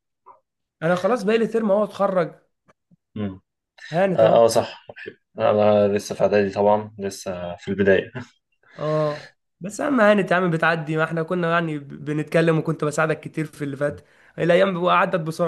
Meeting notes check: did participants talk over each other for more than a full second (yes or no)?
no